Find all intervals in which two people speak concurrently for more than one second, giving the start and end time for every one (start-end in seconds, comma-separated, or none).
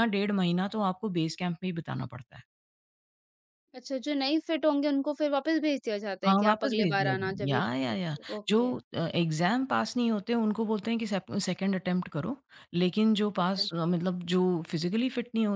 6.2-8.6